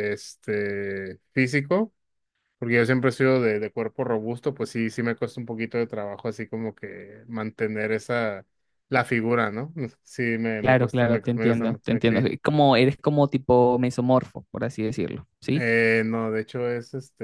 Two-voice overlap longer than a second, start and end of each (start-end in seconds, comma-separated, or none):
10.6-12.2